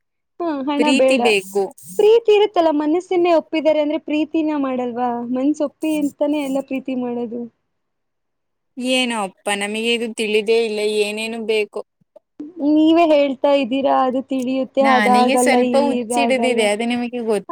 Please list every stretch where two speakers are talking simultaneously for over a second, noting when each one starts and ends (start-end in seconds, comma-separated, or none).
14.9-16.6